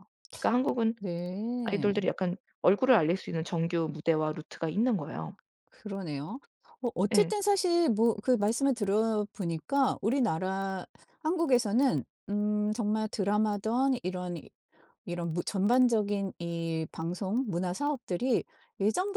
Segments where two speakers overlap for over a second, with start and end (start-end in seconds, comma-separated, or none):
none